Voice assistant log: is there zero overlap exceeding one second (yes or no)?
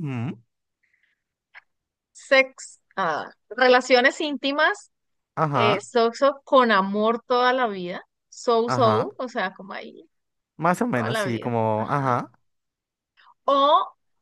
no